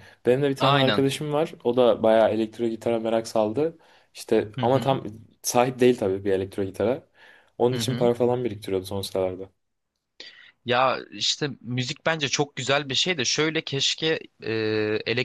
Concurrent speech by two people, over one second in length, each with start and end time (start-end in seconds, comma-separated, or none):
none